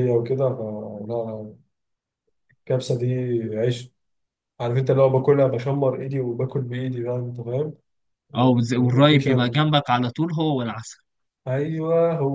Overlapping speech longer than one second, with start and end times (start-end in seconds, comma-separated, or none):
8.3-9.6